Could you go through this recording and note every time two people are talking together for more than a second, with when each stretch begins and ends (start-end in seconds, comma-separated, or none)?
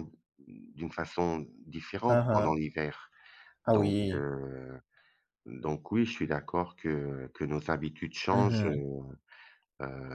none